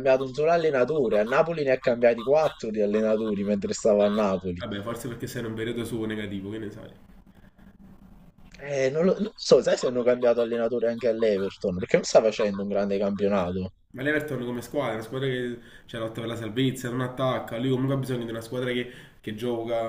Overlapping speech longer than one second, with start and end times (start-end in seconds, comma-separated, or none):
none